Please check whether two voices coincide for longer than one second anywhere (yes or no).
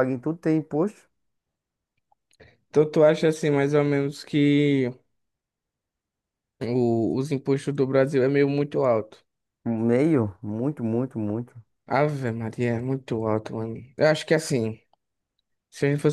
no